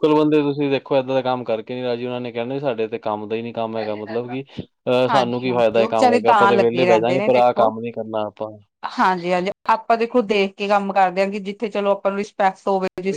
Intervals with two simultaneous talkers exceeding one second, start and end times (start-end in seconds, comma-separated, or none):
5.1-7.7